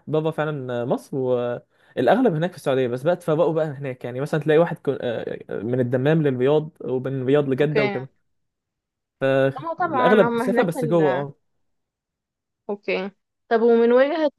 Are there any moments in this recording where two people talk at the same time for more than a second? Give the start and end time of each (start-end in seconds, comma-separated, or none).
9.8-11.3